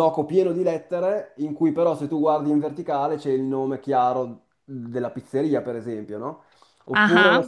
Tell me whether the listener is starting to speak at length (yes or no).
no